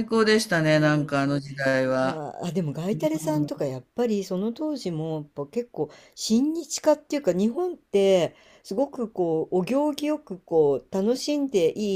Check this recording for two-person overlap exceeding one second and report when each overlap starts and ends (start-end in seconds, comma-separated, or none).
none